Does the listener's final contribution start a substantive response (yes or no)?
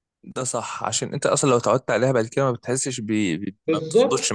yes